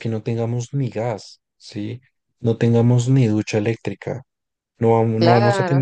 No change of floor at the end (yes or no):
no